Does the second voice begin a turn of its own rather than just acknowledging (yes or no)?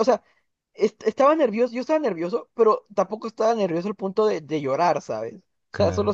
no